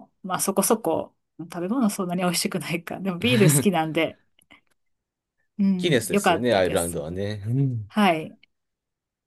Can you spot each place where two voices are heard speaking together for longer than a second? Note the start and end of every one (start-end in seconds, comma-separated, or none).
5.8-7.0